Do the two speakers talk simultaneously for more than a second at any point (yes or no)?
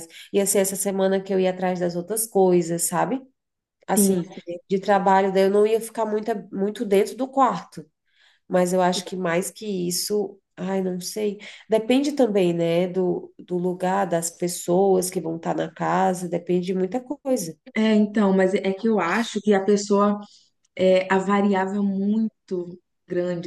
no